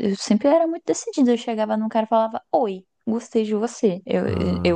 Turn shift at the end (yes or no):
yes